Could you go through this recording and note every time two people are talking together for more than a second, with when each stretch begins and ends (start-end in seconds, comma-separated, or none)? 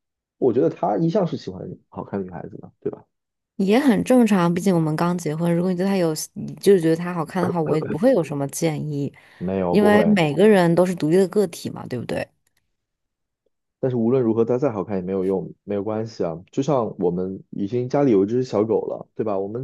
none